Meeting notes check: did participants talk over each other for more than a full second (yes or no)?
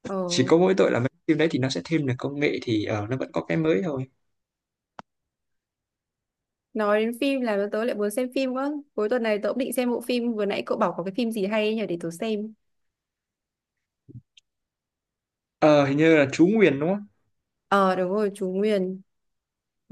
no